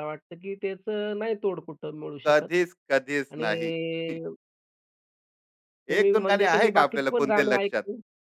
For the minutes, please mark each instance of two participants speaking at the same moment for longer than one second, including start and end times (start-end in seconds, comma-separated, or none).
6.0-7.8